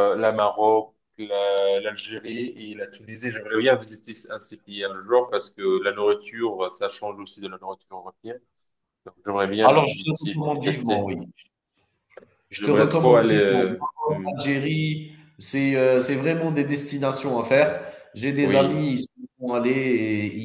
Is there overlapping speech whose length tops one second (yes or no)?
yes